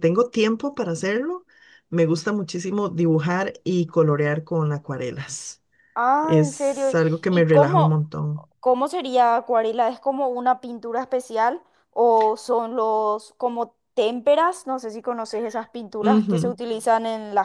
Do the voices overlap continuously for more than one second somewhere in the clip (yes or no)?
yes